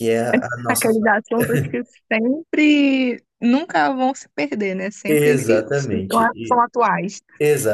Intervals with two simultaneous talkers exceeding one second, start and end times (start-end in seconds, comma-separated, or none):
5.1-6.3